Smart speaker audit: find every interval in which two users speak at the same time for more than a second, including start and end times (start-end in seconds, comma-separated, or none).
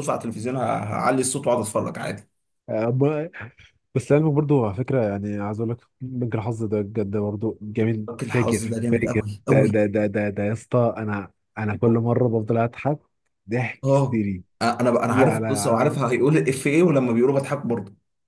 8.1-9.8, 14.9-16.2